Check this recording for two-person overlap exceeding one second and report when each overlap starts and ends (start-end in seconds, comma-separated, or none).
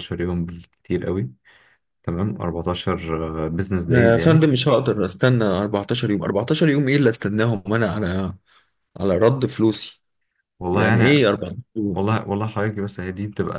none